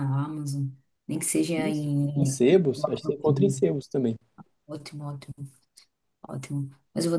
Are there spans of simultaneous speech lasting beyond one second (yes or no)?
yes